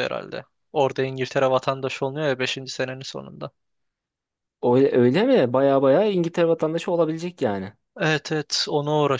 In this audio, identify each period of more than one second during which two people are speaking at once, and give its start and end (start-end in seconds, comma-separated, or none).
none